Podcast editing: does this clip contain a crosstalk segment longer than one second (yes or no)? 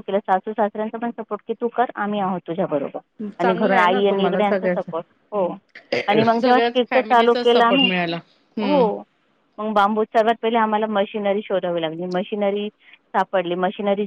yes